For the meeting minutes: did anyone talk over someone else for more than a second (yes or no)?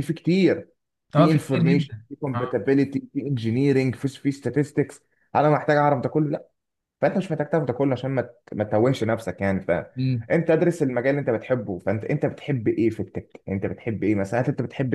yes